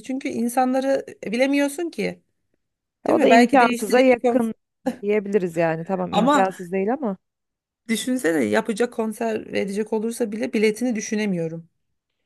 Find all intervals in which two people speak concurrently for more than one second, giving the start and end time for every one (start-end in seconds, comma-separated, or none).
3.1-4.5